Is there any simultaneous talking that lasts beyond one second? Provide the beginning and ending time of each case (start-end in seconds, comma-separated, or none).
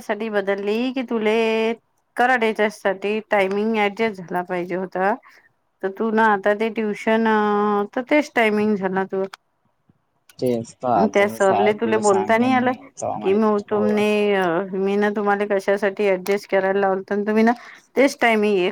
13.2-14.4